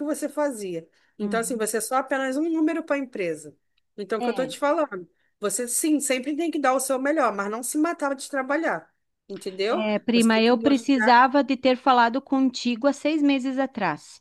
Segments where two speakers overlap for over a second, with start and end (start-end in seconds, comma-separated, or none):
9.7-11.2